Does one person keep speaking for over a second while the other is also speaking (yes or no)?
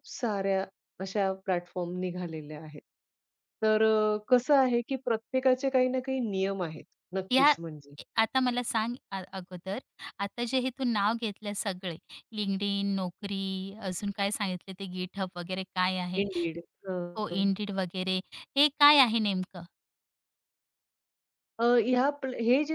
no